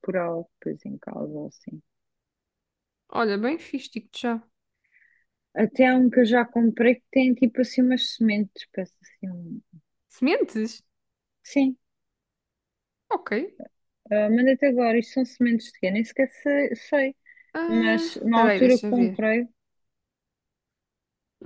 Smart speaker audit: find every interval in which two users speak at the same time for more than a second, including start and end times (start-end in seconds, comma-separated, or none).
17.7-19.2